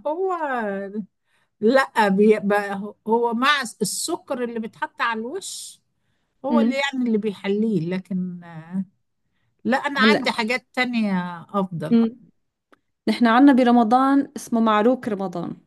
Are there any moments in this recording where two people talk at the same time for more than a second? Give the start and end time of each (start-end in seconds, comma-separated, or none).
none